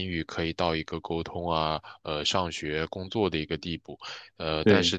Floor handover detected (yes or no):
no